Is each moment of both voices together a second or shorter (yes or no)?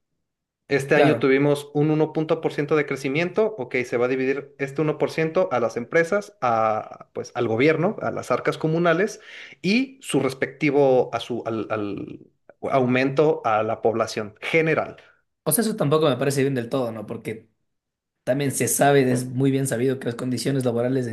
yes